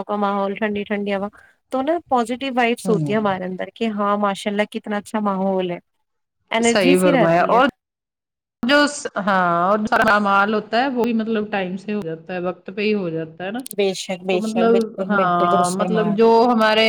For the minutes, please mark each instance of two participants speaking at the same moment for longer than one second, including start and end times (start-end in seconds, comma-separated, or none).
14.3-16.1